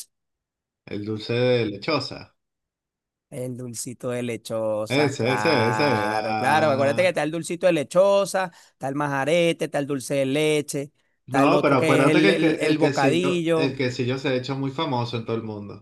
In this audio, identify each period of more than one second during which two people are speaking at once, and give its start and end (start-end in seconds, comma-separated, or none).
4.9-7.2, 11.2-13.8